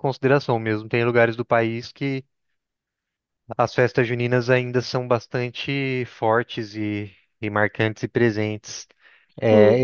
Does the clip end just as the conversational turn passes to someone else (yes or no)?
yes